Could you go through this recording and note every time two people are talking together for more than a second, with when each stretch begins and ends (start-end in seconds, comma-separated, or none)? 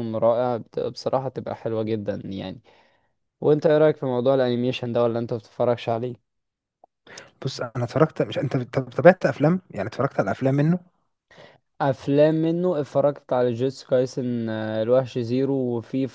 none